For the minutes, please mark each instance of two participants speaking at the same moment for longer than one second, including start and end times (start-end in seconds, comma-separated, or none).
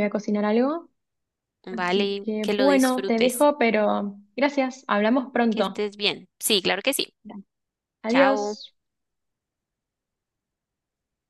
1.7-3.4